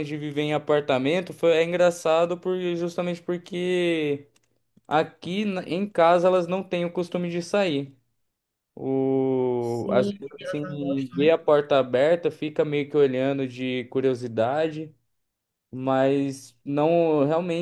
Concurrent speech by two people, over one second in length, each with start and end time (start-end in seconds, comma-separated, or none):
9.6-11.2